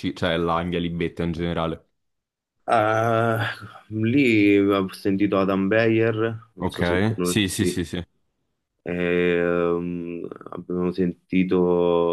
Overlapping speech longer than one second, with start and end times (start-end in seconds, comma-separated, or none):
6.6-7.8